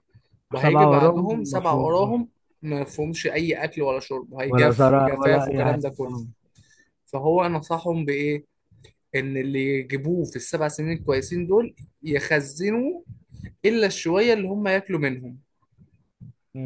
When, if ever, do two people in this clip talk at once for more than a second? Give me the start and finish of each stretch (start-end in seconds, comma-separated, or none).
0.5-2.1, 4.5-6.2